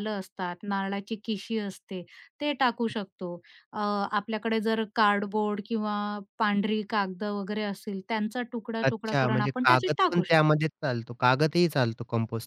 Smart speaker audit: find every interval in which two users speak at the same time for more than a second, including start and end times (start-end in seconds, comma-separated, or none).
8.8-10.5